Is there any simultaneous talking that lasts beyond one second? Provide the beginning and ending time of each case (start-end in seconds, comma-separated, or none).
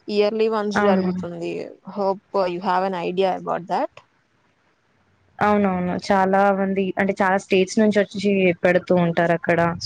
none